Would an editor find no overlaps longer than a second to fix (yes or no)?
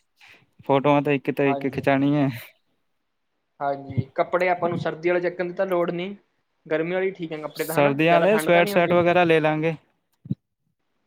no